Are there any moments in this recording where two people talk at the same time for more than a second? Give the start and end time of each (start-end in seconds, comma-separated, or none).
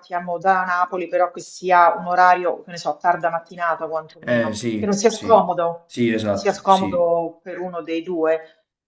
4.2-7.1